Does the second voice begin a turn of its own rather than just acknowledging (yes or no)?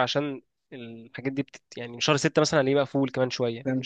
yes